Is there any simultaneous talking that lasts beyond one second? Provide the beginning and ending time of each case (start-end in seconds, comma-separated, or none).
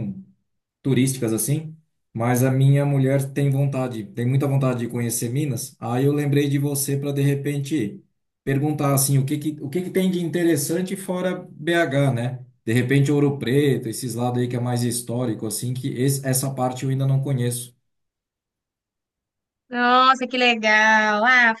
none